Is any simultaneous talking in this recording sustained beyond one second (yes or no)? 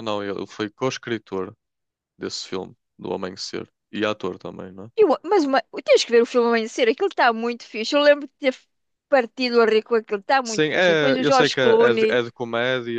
yes